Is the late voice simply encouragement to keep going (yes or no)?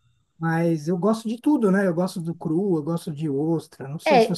no